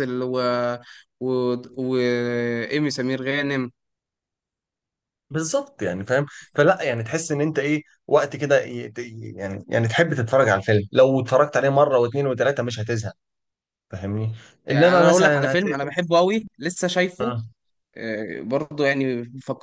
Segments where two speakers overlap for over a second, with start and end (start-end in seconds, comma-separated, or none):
14.7-16.0